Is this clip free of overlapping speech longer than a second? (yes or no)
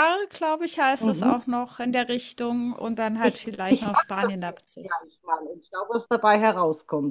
no